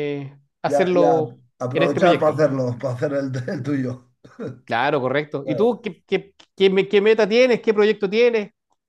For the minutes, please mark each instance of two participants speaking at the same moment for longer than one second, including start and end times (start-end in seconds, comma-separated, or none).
0.7-2.5